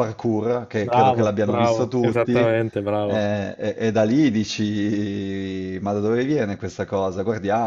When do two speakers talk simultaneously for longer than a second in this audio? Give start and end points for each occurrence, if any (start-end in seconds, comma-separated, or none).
0.8-2.4